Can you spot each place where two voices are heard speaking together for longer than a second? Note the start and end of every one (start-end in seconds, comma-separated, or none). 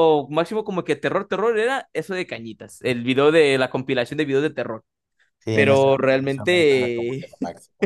5.5-7.3